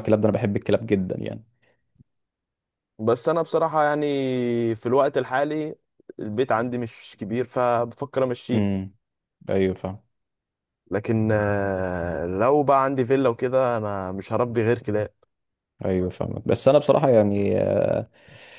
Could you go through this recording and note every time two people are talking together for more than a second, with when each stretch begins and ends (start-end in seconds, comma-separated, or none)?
none